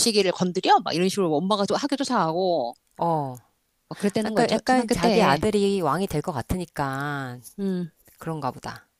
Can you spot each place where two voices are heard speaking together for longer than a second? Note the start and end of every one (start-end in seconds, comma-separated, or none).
4.2-5.5